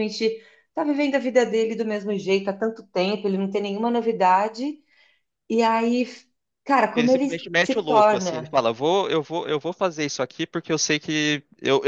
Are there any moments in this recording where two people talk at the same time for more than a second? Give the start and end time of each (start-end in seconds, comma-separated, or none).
6.9-8.6